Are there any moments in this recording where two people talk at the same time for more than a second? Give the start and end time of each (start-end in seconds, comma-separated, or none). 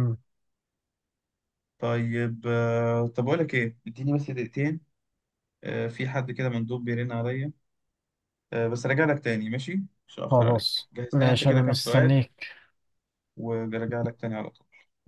10.3-12.2